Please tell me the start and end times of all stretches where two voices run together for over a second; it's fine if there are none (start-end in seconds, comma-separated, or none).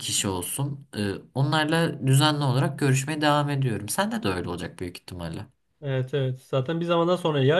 none